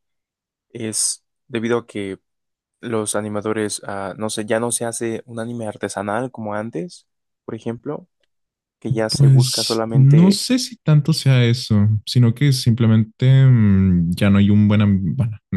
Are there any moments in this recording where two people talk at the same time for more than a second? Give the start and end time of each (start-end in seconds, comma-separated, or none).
9.1-10.4